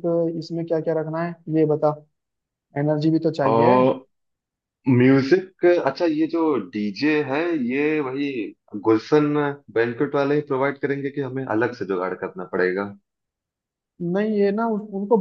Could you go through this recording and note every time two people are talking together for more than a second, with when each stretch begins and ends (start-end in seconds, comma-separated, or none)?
none